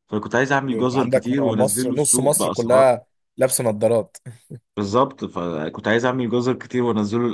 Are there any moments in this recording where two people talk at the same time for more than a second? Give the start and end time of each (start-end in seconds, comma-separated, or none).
0.7-2.9